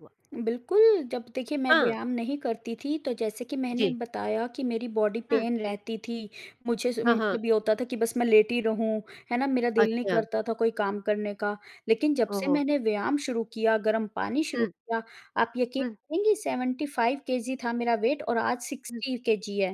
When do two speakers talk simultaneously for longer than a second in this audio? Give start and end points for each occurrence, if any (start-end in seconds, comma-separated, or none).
none